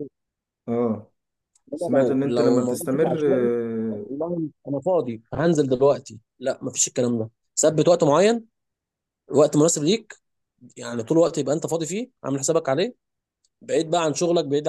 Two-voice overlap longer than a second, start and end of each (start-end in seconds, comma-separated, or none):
1.7-3.5